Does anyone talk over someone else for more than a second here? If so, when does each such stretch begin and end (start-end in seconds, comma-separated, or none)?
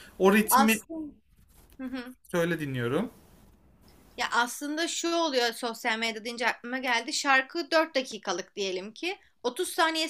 none